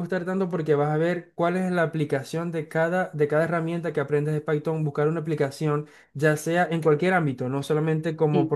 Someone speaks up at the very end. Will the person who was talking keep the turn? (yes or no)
yes